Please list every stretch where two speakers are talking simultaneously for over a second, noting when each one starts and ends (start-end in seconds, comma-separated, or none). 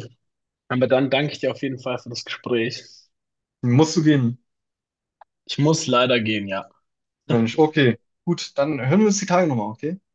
none